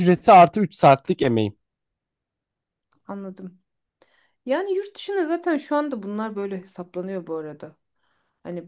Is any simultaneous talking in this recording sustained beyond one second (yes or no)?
no